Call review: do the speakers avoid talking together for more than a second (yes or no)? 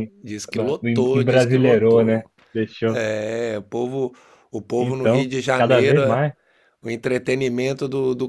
no